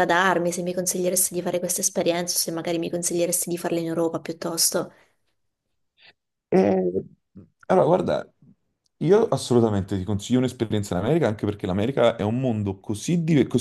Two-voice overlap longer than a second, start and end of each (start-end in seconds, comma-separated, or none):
none